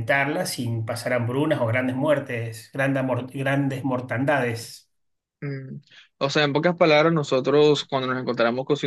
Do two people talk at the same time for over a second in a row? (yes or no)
no